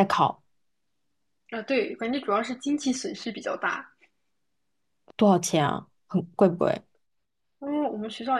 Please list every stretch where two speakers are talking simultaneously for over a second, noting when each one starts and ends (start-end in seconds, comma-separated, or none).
none